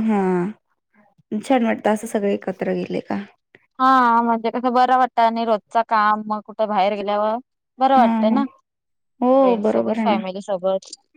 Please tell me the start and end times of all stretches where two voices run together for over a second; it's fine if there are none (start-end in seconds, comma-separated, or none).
none